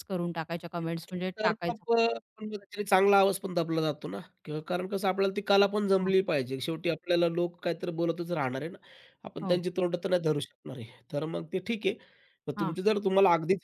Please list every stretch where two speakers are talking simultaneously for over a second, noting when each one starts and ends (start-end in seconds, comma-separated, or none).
none